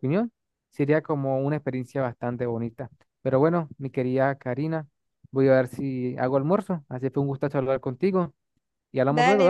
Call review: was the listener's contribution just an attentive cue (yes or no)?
no